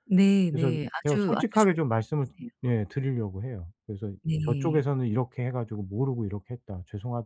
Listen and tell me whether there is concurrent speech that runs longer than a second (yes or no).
yes